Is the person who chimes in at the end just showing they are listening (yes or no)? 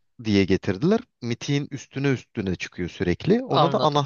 no